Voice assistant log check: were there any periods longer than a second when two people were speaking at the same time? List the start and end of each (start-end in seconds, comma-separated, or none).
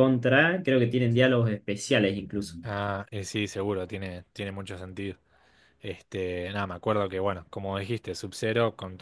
none